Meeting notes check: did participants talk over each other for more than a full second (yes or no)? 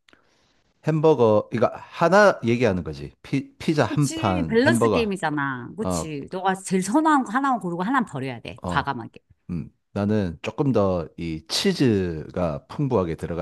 yes